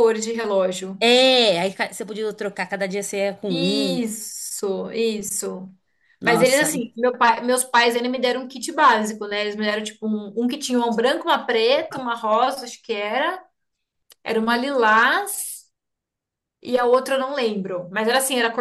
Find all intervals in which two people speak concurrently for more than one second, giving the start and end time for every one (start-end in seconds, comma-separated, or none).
none